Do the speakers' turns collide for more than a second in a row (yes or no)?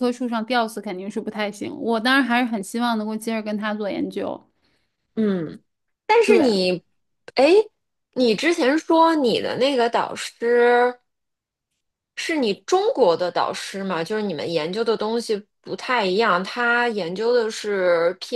no